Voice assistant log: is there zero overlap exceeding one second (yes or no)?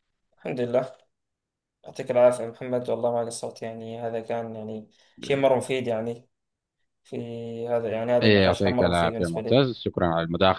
no